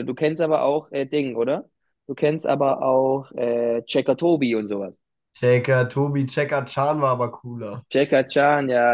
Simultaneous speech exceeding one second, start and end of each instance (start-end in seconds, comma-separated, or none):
none